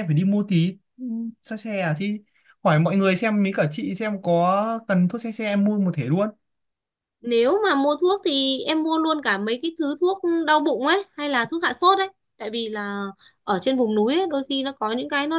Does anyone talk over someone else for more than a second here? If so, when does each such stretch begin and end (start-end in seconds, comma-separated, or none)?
none